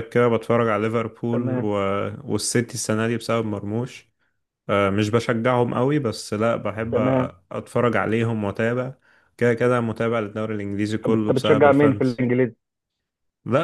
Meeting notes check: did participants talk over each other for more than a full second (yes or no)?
yes